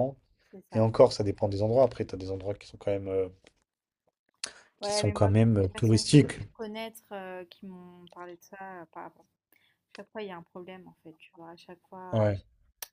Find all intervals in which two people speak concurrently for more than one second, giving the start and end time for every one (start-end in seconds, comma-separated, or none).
4.8-6.4